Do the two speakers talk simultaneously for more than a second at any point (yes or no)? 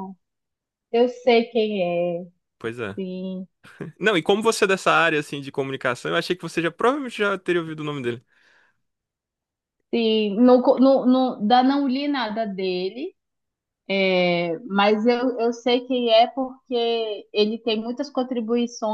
no